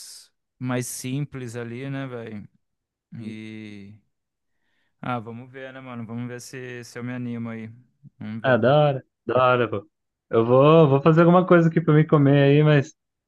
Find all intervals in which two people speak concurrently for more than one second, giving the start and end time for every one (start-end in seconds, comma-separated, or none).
none